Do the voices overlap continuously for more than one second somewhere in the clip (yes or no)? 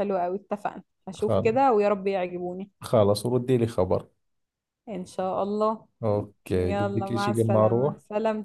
yes